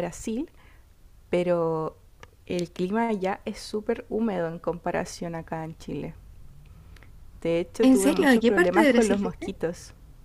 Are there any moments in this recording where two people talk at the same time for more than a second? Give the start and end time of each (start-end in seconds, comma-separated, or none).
7.8-9.5